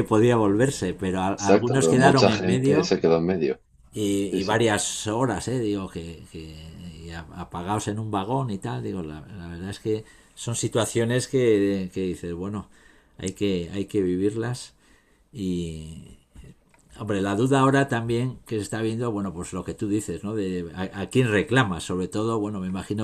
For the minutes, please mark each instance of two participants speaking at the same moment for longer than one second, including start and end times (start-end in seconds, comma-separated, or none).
1.4-2.9